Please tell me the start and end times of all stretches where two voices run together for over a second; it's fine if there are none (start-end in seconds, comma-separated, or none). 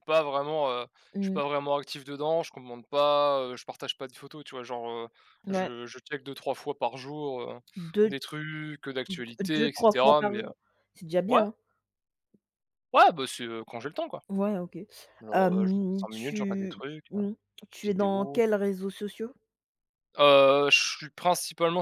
9.1-10.5, 15.3-17.2